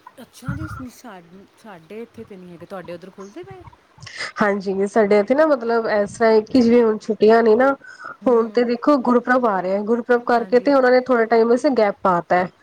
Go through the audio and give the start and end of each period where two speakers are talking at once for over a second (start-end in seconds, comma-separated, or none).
none